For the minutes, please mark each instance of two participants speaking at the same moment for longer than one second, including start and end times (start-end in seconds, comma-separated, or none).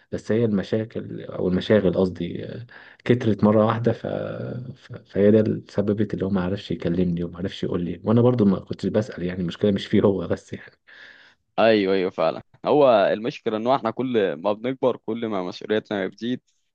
none